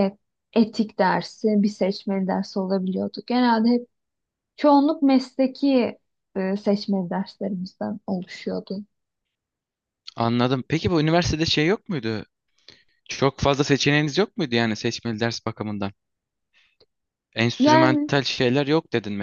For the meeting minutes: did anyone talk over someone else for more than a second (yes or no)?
no